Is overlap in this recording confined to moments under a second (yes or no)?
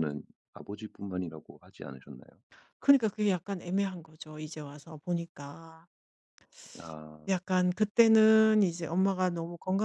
yes